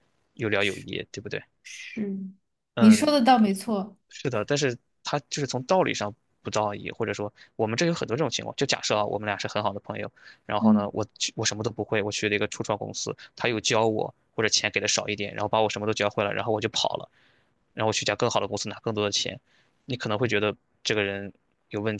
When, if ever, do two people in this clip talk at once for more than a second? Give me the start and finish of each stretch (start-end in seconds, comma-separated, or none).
none